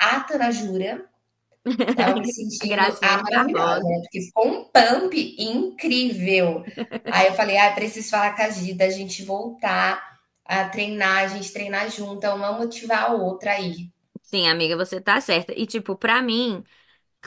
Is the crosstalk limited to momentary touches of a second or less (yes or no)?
no